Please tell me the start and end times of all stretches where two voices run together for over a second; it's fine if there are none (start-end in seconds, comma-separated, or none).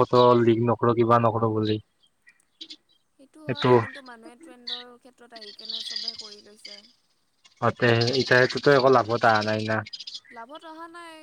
none